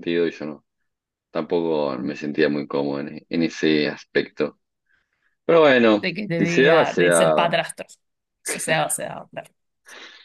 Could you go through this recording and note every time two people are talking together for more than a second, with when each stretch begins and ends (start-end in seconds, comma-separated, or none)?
6.0-7.6